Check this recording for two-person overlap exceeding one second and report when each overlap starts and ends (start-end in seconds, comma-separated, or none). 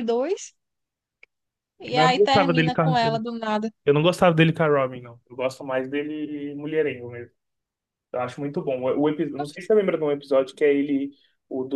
1.9-3.2